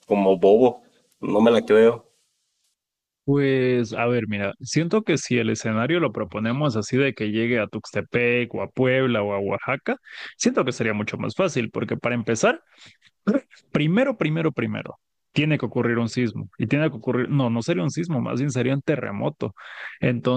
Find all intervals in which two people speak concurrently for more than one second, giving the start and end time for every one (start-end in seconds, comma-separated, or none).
none